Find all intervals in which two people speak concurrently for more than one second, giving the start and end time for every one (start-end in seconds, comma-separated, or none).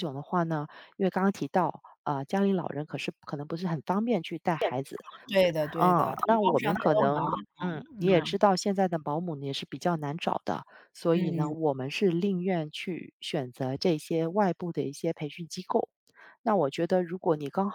5.7-7.3